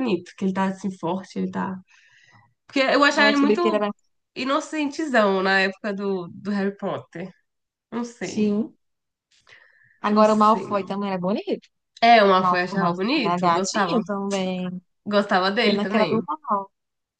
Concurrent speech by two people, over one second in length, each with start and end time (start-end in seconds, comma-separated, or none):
12.4-14.0